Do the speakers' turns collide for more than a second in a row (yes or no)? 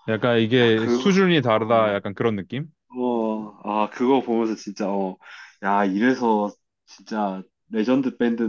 yes